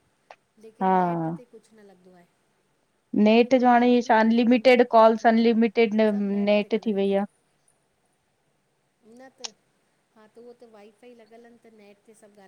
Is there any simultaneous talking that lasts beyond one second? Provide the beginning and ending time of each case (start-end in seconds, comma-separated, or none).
3.5-7.2